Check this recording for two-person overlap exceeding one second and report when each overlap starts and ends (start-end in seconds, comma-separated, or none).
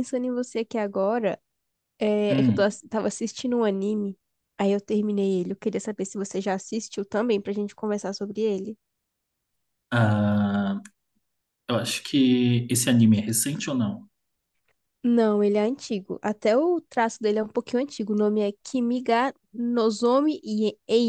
none